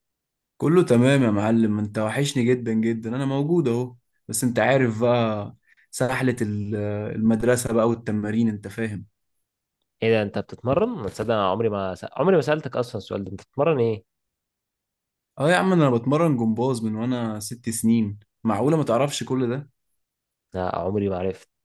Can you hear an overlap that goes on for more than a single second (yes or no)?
no